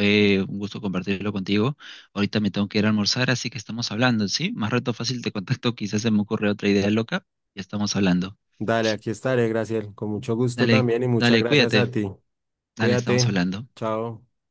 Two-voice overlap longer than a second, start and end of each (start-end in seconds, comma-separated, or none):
10.6-11.9